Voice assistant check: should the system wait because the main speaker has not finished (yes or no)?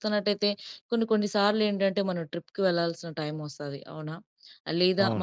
yes